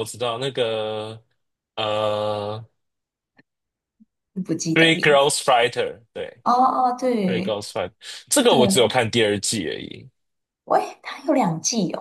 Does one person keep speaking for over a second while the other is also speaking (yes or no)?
no